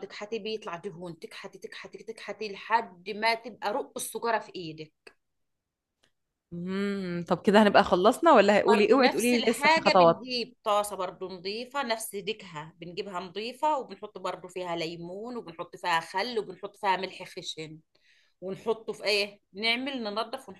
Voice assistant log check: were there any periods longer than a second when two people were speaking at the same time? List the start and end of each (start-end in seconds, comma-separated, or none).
8.7-10.2